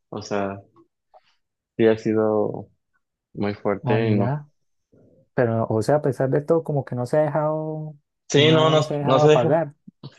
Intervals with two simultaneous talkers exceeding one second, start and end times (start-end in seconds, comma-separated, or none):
8.3-9.6